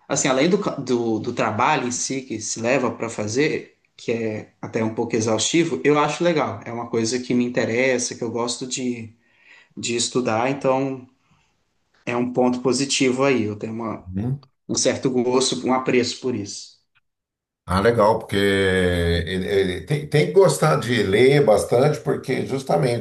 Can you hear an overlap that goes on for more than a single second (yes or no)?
no